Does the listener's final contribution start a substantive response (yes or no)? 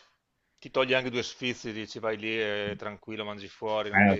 yes